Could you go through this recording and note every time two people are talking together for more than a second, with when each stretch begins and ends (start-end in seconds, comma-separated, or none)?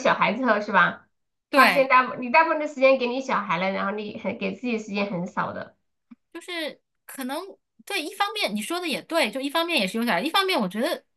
none